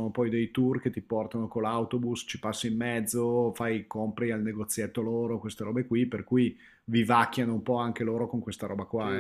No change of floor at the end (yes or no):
no